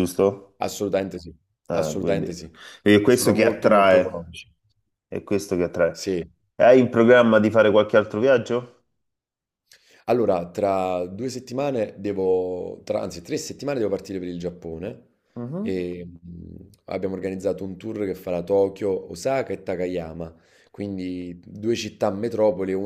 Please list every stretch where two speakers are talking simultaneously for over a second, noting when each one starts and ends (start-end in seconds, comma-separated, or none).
3.0-4.3